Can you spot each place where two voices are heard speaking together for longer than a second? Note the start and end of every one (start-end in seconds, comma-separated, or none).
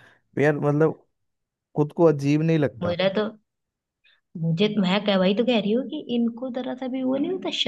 none